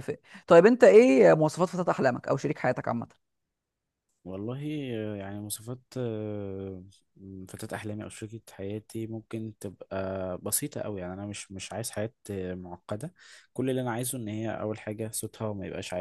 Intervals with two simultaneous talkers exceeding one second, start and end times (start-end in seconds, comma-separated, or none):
none